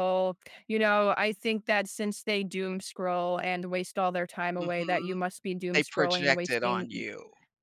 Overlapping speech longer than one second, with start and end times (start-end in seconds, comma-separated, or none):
5.8-7.0